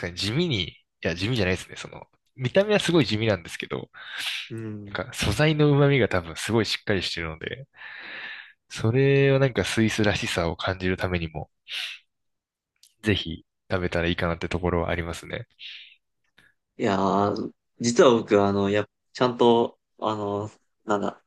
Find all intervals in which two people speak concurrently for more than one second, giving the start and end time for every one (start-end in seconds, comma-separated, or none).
none